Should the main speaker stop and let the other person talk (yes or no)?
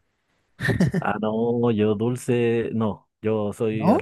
no